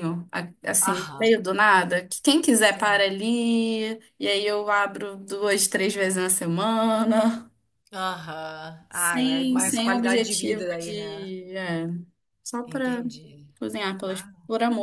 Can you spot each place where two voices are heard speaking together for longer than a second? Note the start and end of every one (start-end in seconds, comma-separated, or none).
8.9-11.3